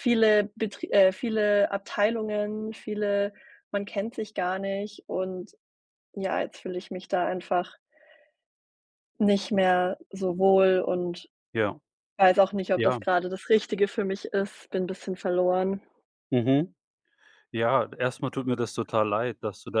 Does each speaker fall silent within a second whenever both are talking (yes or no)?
yes